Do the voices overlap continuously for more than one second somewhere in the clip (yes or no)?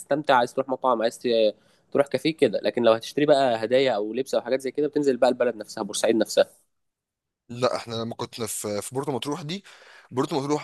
no